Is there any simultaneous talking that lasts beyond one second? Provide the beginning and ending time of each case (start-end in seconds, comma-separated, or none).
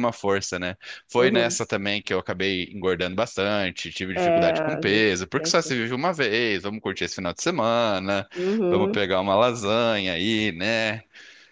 4.1-5.7